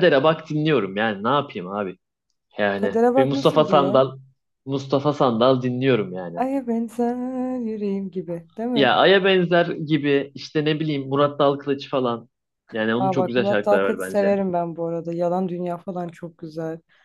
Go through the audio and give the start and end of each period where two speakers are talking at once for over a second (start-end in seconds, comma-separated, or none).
2.7-4.0, 13.0-14.3